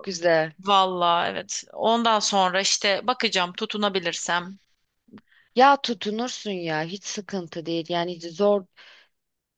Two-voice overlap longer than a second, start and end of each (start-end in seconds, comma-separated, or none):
none